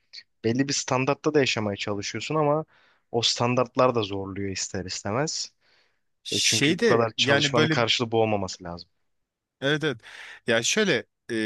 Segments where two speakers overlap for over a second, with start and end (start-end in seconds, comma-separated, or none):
6.3-7.8